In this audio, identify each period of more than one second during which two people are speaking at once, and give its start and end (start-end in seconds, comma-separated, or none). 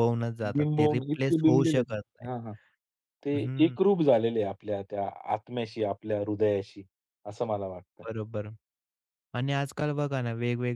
0.5-2.3